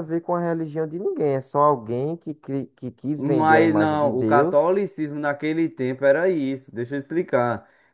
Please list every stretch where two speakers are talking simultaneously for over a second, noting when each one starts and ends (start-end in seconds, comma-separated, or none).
3.2-4.7